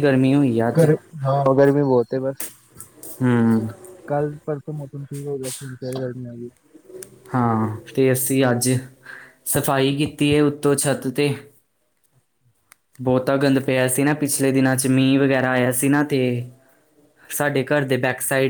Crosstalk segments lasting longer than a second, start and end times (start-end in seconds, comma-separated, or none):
none